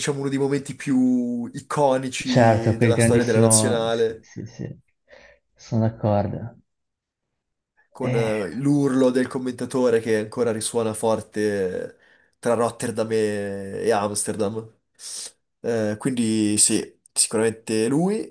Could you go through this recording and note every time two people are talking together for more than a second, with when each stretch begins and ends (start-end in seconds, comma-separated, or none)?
2.2-4.3